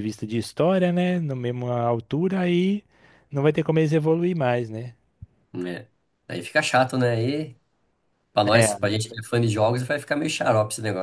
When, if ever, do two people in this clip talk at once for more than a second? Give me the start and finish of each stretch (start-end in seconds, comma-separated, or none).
none